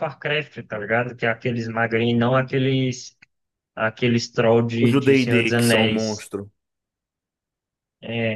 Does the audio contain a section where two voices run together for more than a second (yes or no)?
yes